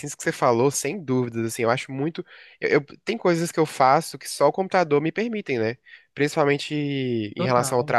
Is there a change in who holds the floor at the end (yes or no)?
no